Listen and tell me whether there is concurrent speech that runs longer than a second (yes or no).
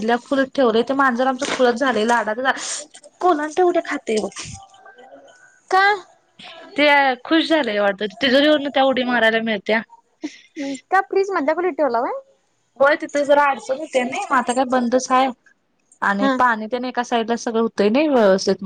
no